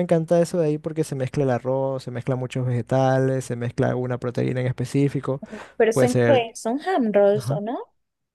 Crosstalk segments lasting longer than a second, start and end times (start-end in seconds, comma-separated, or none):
none